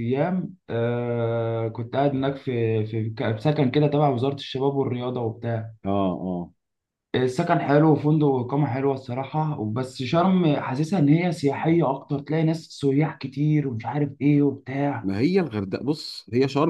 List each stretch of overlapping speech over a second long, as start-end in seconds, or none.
none